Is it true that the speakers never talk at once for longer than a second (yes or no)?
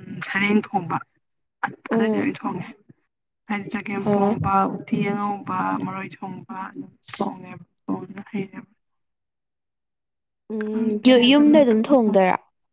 yes